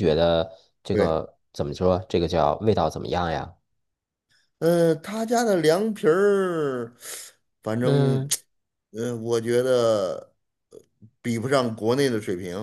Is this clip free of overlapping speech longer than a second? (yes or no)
yes